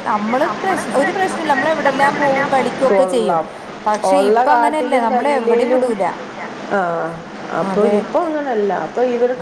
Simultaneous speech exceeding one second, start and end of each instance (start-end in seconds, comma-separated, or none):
4.1-5.8